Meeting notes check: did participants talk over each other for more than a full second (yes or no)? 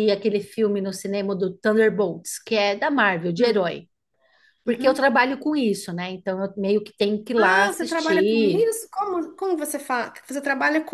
yes